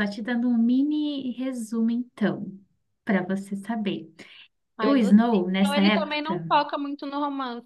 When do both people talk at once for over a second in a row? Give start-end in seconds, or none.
4.8-6.4